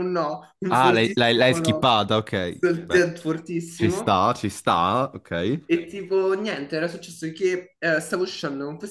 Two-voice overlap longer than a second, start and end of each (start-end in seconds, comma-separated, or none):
0.7-1.9